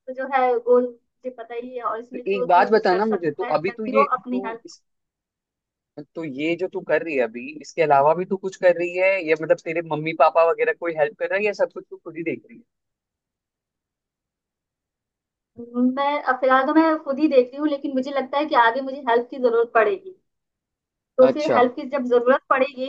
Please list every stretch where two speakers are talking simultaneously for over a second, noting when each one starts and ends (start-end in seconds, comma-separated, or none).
2.1-4.6